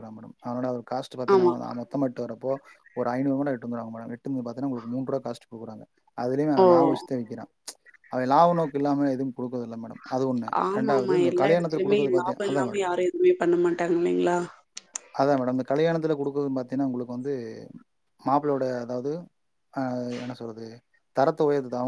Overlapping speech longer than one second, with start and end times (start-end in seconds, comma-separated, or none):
10.6-12.9